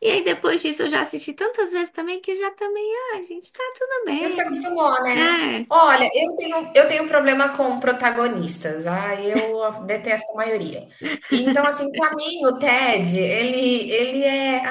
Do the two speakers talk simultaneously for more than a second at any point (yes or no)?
no